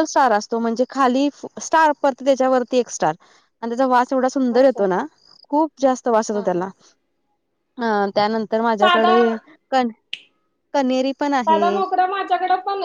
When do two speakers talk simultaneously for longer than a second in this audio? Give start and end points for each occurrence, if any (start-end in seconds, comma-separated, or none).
none